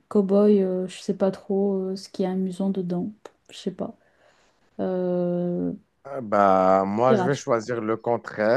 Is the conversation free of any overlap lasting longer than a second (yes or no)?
yes